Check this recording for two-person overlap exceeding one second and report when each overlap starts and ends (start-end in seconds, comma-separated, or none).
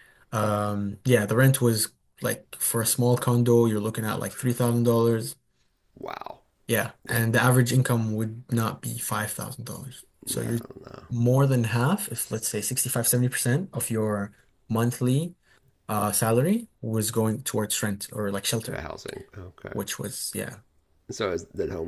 none